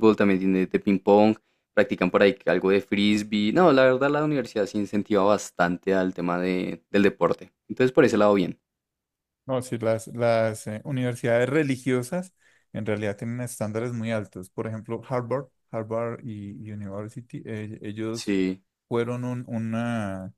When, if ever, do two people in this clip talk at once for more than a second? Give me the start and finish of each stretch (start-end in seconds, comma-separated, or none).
none